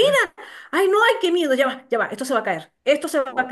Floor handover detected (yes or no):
no